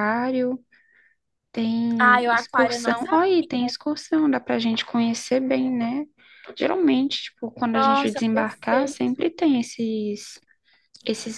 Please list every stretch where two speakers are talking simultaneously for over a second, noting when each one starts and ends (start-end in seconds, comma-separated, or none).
2.0-3.2, 7.7-9.1